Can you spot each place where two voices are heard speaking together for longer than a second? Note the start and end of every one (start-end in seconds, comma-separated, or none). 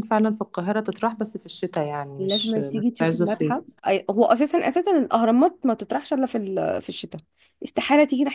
2.2-3.5